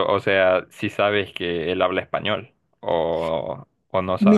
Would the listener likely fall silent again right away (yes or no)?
no